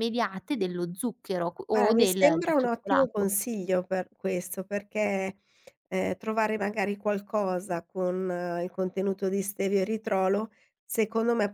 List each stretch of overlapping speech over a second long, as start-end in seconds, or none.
1.7-3.3